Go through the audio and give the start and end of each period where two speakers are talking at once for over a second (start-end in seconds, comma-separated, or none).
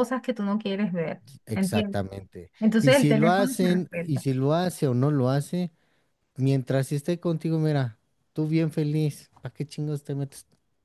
2.6-4.3